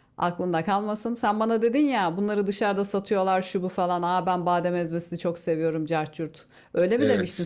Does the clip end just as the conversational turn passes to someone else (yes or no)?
yes